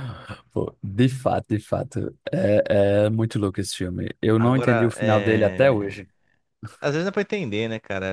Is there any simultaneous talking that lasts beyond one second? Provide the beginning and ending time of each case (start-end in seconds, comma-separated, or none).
4.4-6.0